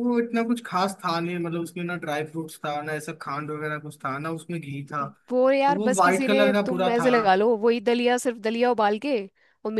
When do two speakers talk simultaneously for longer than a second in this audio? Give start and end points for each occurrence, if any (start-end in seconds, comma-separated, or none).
5.7-7.1